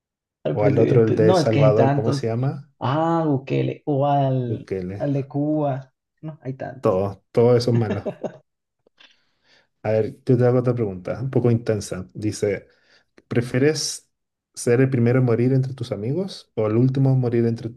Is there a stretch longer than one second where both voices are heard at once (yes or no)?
yes